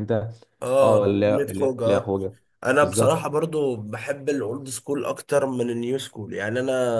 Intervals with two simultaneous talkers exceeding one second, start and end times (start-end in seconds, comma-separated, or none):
0.8-2.1